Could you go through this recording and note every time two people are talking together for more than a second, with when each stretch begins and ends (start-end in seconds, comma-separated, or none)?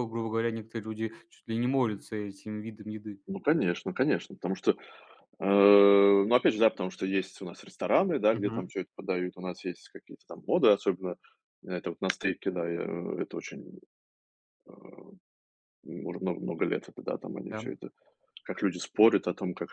none